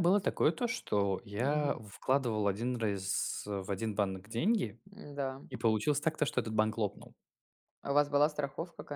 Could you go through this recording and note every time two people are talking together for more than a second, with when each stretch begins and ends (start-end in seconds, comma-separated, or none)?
none